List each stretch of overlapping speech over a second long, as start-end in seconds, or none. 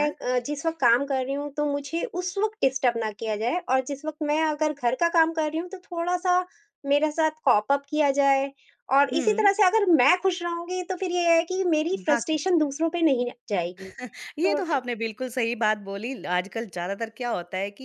none